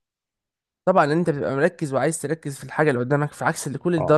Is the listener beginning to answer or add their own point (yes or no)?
yes